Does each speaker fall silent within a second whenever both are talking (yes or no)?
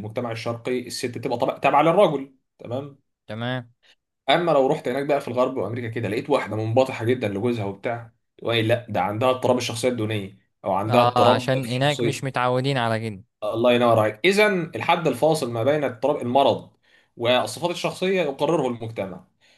no